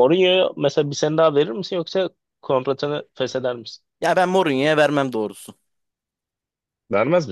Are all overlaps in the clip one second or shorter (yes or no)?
yes